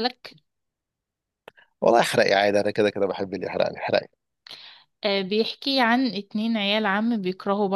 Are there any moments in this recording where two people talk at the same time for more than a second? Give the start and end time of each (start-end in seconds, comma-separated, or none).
none